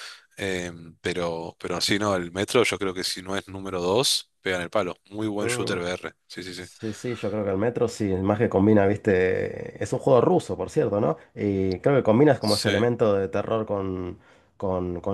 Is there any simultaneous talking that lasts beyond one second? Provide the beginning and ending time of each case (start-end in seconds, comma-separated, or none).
none